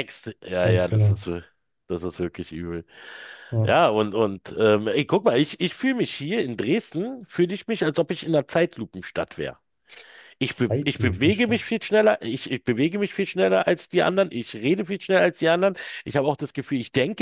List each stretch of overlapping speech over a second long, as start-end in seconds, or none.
10.4-11.6